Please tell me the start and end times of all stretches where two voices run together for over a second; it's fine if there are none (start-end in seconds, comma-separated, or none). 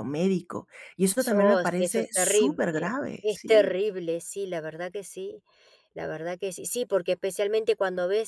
1.3-2.6